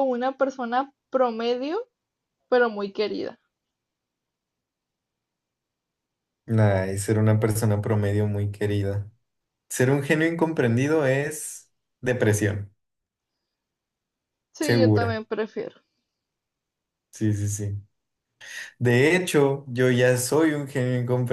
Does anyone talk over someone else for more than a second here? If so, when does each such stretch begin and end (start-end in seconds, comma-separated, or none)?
none